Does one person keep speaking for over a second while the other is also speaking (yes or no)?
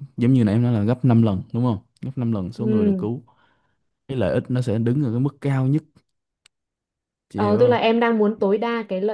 no